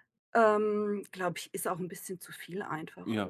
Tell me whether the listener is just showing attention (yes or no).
no